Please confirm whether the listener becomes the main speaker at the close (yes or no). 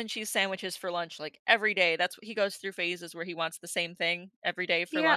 yes